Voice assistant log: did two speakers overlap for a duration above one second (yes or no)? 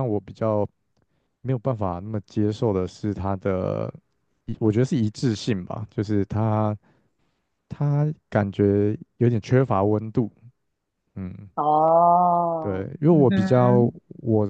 yes